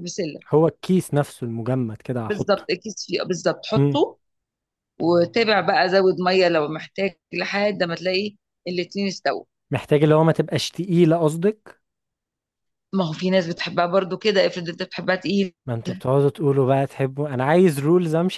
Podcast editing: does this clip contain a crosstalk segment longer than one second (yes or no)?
no